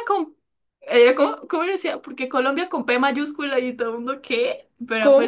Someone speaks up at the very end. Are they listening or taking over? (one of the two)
listening